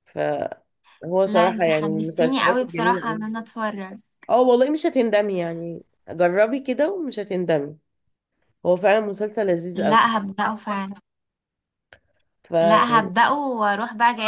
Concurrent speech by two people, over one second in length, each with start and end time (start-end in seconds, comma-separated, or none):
1.2-3.2